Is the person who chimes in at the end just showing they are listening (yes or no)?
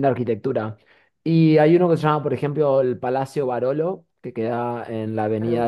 yes